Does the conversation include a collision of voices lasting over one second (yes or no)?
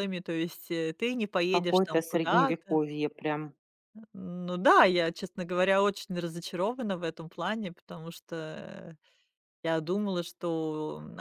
yes